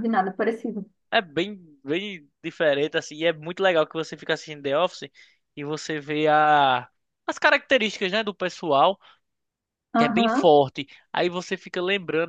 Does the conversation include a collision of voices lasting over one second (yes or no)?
no